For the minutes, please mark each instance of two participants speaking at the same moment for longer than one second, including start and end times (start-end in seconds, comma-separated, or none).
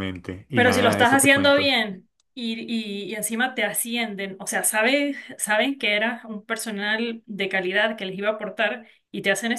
0.5-1.8